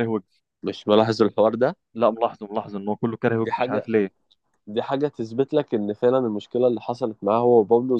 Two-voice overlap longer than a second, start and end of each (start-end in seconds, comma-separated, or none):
none